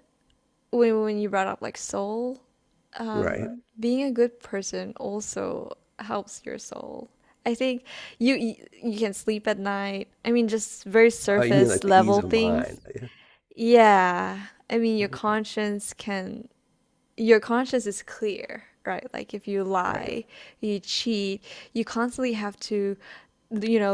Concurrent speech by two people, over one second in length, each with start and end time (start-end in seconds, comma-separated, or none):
11.3-12.9